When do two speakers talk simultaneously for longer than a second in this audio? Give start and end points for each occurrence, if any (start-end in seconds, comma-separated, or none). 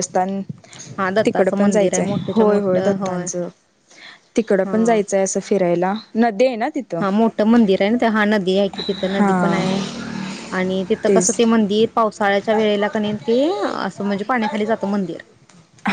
1.2-3.0